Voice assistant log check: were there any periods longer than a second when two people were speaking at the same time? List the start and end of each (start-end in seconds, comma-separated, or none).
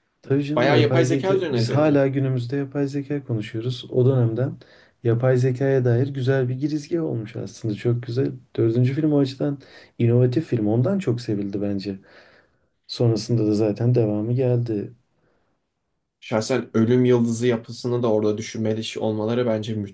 0.6-2.0